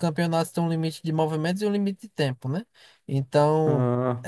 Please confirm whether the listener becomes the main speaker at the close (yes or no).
no